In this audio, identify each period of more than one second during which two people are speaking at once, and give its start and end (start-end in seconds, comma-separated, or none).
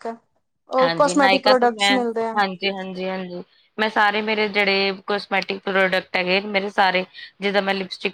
0.8-2.4